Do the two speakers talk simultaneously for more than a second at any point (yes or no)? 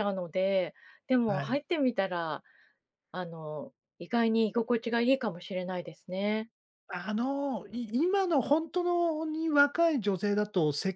no